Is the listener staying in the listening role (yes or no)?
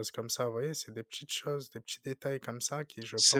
yes